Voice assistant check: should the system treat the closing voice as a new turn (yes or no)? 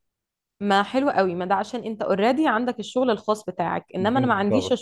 no